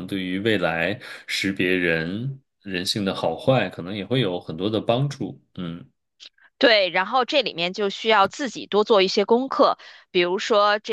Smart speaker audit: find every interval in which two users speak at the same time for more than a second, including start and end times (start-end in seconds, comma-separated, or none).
none